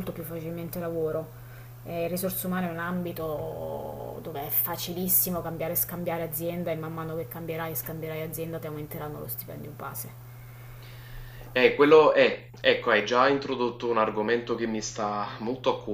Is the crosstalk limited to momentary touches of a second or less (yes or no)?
yes